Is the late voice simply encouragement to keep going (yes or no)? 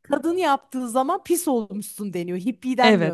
no